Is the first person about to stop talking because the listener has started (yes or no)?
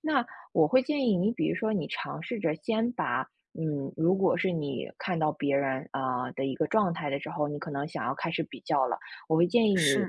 no